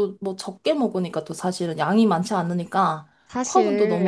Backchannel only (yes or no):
no